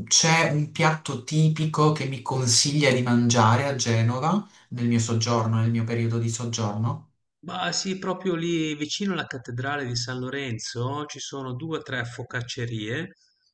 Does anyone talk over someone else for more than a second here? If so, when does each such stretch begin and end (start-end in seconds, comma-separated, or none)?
none